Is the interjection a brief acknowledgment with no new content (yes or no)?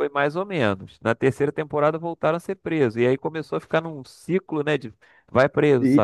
no